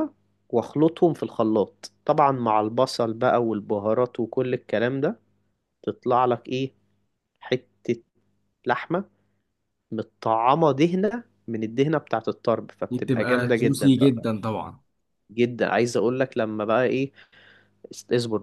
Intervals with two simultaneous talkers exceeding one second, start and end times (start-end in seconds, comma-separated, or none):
12.9-14.2